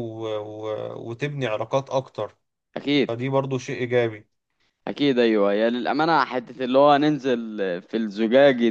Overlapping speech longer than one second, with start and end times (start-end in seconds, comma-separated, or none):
none